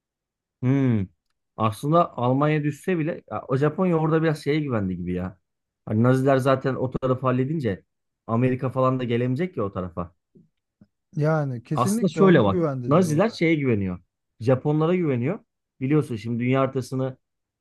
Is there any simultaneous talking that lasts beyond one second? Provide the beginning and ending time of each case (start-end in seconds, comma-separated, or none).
11.7-13.4